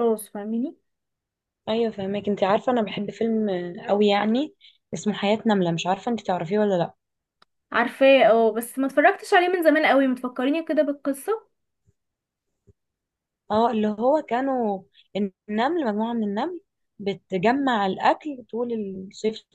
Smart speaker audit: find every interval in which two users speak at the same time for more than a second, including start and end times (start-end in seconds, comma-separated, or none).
none